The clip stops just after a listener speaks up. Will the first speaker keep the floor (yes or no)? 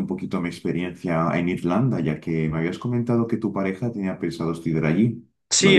no